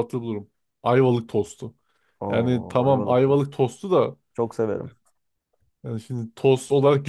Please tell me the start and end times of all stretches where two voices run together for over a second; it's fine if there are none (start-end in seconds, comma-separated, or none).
2.3-3.5